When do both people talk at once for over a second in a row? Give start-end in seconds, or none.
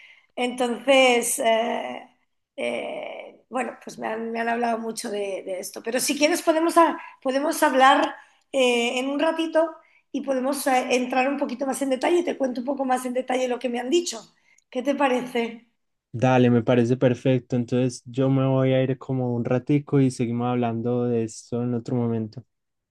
none